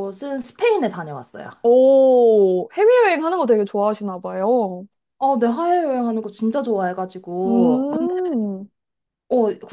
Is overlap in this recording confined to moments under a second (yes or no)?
yes